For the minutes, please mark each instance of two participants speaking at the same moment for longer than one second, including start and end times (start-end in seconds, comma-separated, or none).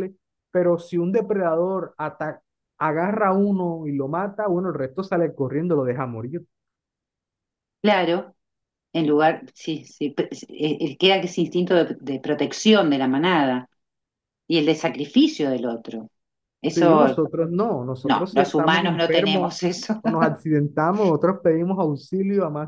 18.0-19.6